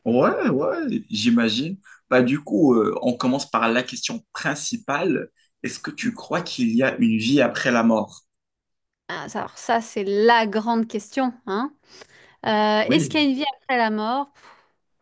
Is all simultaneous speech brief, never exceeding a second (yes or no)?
yes